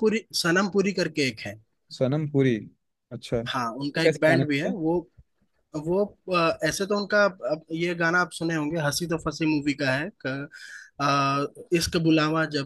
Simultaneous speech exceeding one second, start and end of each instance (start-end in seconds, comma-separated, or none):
3.5-4.7